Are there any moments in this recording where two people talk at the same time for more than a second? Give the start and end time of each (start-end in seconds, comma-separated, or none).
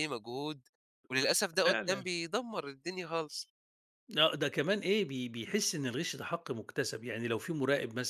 none